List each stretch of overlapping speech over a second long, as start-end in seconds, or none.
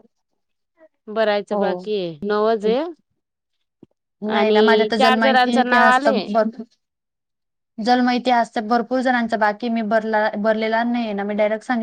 4.4-6.3